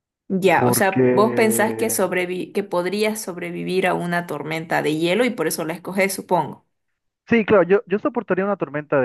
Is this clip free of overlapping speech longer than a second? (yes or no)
no